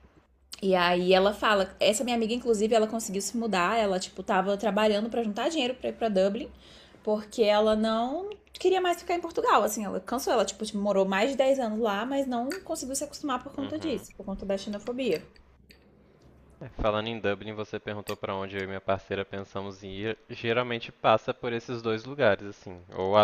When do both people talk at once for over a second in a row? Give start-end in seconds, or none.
none